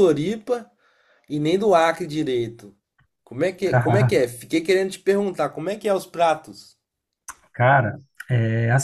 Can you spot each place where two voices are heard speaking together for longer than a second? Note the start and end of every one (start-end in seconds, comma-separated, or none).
none